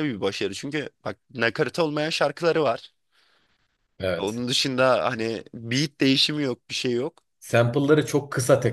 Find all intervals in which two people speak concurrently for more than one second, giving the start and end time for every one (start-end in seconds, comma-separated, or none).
none